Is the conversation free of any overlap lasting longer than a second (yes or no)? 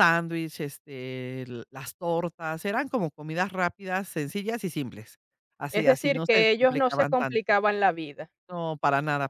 no